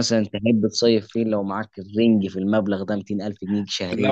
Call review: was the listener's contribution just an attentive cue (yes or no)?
no